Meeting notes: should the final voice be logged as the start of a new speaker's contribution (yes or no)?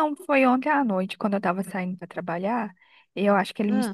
no